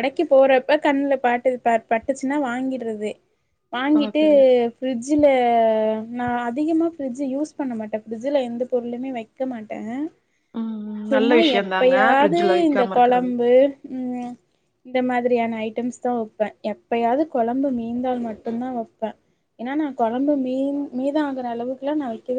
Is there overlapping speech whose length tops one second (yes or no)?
yes